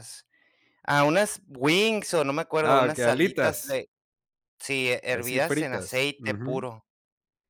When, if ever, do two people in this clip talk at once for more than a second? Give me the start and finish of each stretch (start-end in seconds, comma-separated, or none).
2.6-3.8, 5.1-6.7